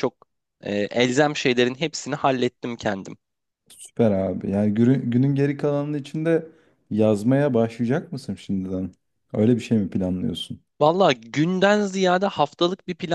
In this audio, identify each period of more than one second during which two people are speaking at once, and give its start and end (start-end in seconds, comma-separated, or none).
none